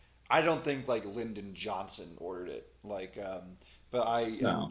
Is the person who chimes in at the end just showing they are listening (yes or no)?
yes